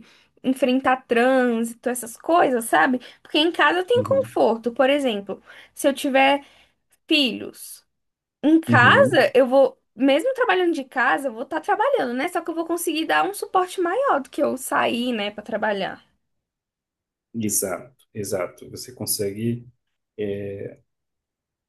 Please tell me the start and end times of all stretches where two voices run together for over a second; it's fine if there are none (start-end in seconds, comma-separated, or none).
none